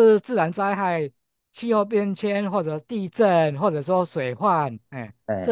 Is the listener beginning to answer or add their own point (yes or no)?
no